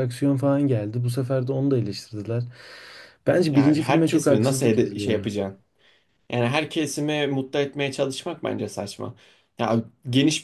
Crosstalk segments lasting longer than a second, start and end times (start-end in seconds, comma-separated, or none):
3.5-5.3